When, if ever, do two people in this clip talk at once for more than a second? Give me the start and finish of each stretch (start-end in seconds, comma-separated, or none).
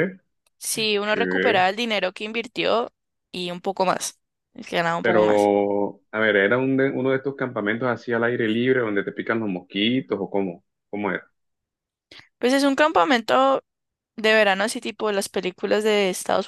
none